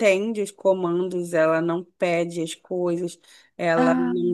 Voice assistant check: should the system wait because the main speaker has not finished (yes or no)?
yes